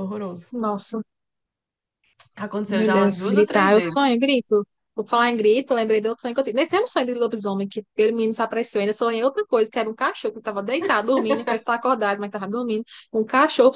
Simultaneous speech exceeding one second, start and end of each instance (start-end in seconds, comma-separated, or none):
2.7-4.0